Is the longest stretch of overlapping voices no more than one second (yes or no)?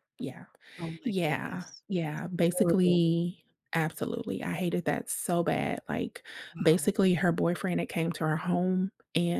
no